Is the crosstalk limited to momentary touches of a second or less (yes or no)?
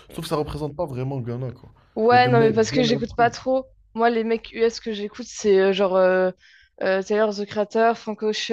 no